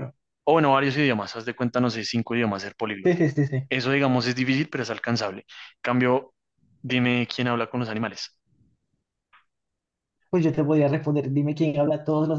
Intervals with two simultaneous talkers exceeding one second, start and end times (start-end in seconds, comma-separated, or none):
none